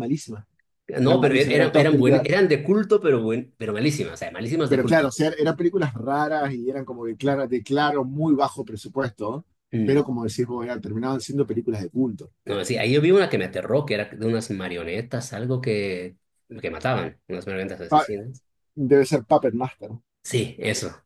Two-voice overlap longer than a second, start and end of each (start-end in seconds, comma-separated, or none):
1.0-2.2